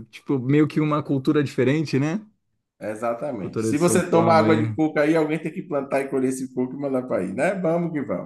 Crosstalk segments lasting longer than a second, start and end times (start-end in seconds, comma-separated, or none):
3.4-4.6